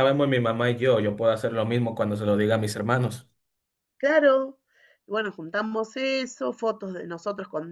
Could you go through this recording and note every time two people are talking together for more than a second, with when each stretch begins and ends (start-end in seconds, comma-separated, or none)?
none